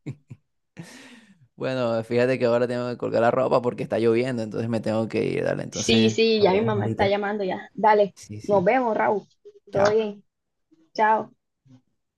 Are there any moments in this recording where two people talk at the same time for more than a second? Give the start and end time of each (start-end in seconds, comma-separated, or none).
5.7-7.2